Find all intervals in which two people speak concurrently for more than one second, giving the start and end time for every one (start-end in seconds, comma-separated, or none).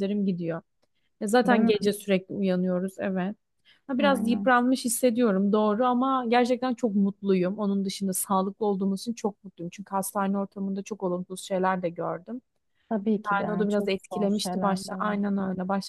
13.2-15.2